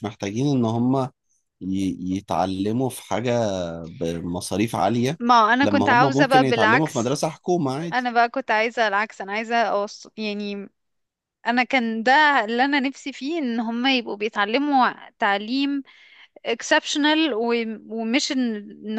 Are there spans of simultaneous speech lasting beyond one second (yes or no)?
yes